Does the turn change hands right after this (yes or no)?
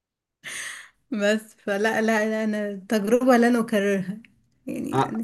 yes